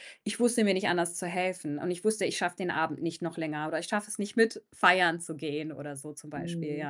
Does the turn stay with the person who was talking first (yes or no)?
no